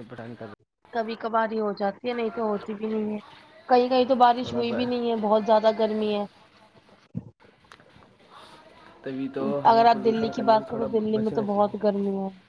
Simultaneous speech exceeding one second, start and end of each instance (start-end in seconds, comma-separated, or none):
9.7-11.8